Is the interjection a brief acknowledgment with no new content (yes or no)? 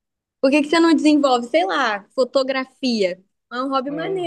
no